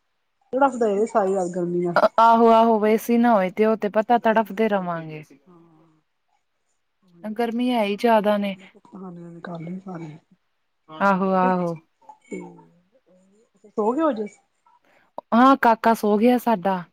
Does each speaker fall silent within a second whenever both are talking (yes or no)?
yes